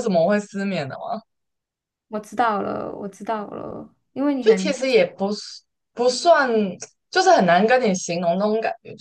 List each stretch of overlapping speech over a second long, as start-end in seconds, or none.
none